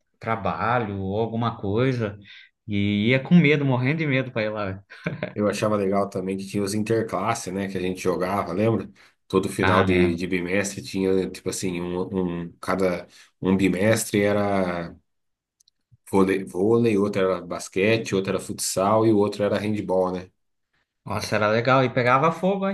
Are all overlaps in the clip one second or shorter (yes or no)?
yes